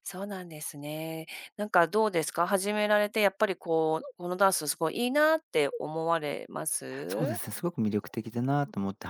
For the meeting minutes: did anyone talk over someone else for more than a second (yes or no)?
no